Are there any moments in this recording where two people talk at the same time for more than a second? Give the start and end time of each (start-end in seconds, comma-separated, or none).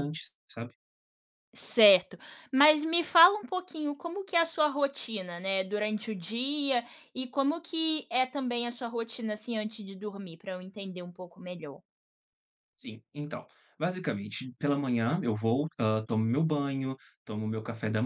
none